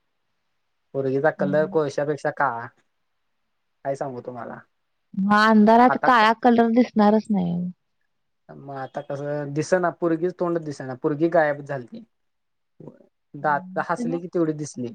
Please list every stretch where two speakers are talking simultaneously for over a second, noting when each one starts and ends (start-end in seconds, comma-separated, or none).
none